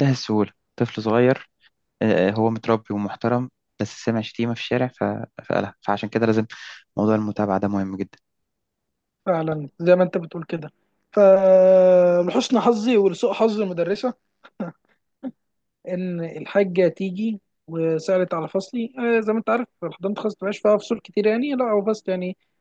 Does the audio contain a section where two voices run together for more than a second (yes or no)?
no